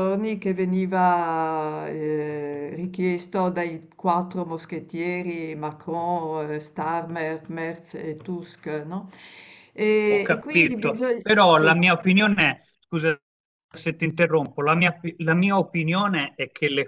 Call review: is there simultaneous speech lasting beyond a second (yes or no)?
yes